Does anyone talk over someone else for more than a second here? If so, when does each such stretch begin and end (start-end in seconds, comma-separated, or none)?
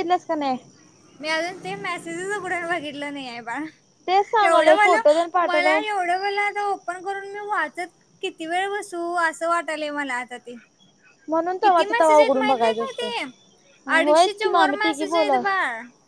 4.5-5.8, 11.6-13.1, 14.0-15.4